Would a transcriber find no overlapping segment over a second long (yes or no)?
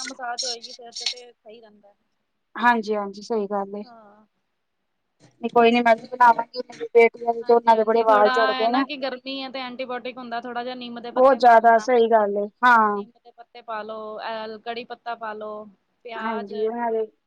no